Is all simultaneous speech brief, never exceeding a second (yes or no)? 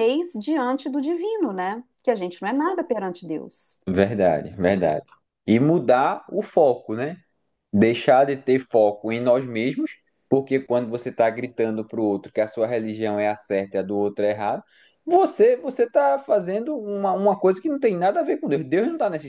yes